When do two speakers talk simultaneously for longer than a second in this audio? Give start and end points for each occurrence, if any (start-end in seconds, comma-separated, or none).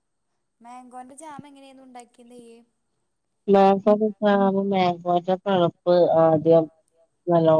none